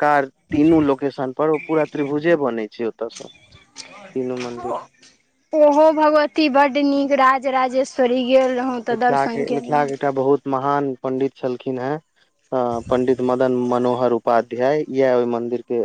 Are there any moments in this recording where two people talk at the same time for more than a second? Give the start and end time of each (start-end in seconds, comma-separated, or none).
none